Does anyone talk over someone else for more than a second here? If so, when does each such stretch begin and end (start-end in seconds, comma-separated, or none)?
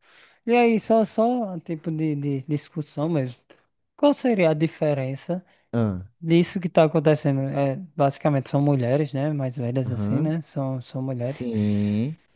none